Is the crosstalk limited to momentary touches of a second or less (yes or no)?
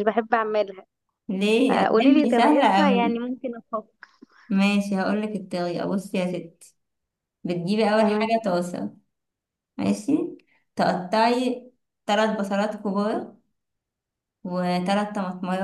no